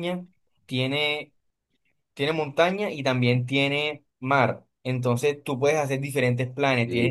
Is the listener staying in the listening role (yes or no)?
yes